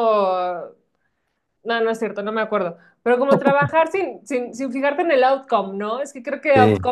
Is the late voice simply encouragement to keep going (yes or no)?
yes